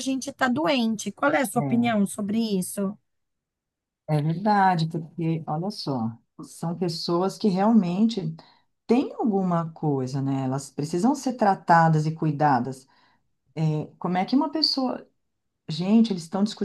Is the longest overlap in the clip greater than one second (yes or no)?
no